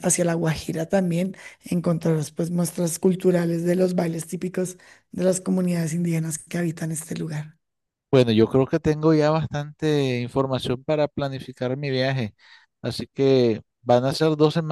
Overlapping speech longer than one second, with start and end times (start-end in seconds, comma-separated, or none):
none